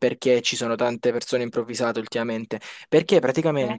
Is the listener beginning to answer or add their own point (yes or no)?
no